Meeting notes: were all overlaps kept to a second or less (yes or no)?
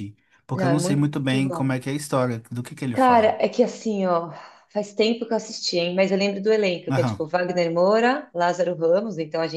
no